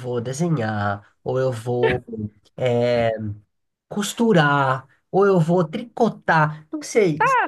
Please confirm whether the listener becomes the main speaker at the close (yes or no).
yes